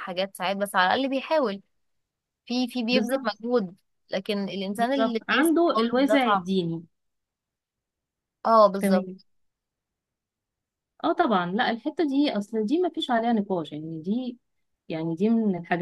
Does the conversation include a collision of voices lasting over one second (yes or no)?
yes